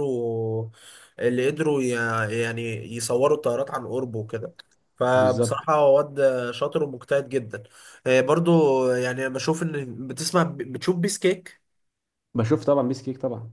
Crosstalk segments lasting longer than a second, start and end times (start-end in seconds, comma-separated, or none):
none